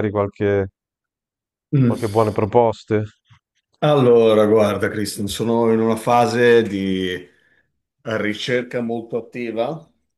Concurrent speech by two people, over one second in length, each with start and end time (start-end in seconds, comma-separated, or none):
none